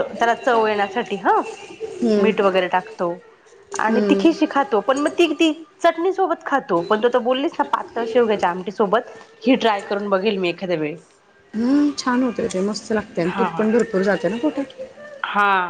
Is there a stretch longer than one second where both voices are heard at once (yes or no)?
no